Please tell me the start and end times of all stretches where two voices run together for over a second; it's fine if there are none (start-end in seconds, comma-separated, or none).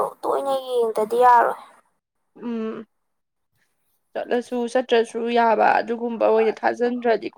none